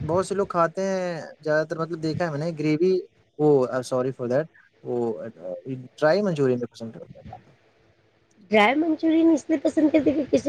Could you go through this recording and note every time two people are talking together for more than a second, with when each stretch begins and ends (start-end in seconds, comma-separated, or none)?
none